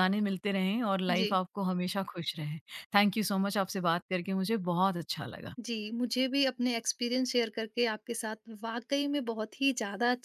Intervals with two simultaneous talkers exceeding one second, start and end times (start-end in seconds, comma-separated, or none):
none